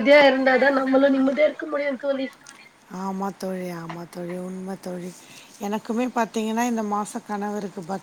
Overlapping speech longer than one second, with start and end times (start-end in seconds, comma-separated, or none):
none